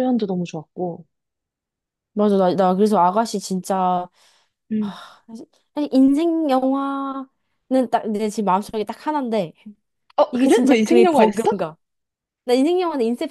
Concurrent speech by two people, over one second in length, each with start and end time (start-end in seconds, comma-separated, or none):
10.3-11.5